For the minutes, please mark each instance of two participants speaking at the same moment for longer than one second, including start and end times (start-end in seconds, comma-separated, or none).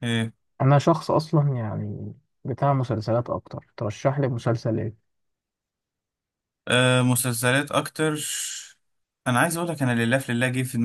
none